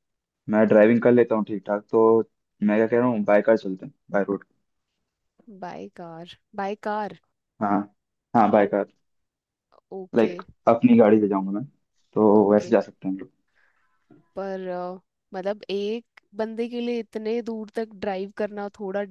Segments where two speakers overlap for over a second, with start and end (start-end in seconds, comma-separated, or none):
none